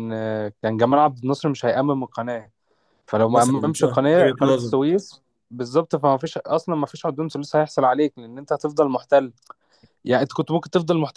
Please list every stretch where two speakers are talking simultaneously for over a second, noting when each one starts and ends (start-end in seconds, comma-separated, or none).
3.2-4.8